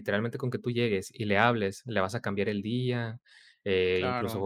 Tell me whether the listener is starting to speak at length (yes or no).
no